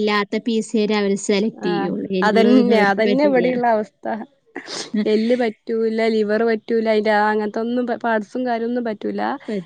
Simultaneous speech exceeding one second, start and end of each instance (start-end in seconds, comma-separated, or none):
1.7-3.5